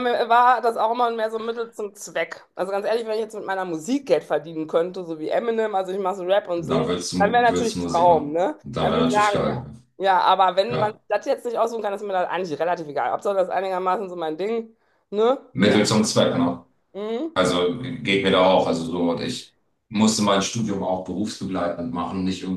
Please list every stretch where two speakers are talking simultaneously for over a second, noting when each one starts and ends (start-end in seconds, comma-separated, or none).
6.6-9.7